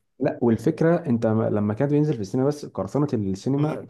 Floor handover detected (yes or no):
no